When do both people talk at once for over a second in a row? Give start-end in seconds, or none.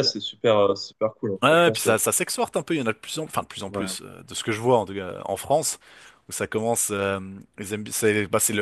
none